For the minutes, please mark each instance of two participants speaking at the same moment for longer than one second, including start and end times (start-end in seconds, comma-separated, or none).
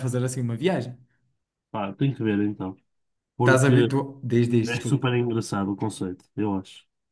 none